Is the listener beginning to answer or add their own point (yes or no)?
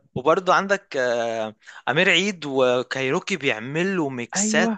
no